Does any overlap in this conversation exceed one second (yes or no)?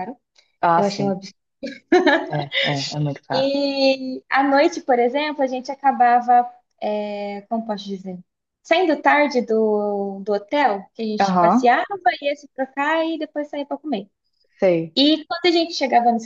no